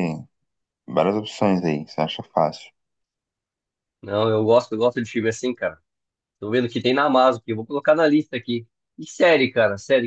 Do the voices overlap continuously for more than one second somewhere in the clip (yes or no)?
no